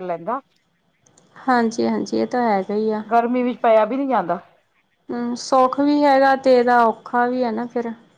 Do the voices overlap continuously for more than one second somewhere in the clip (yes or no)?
no